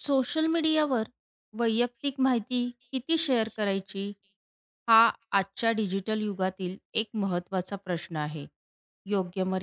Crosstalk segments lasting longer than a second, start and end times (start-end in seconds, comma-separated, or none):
1.9-4.1